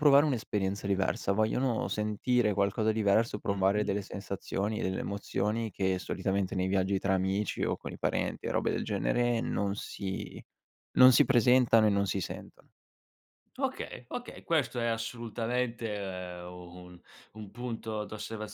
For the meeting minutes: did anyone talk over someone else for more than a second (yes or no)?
no